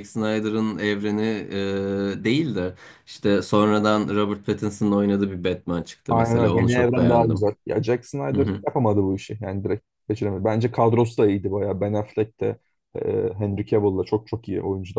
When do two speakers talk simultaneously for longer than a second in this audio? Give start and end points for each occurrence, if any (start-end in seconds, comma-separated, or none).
6.1-7.5